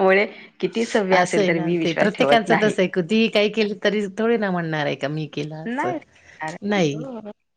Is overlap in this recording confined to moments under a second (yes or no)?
no